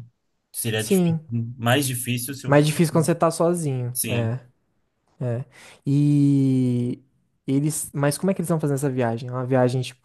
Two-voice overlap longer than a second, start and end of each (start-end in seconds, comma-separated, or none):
none